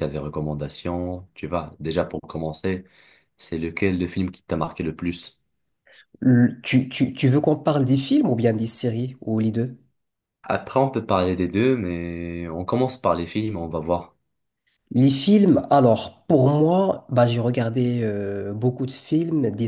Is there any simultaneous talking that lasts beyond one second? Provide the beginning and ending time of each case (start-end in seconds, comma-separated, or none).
none